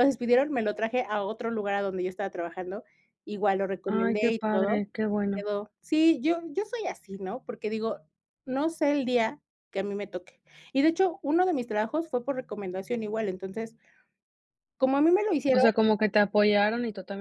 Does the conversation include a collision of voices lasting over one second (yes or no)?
yes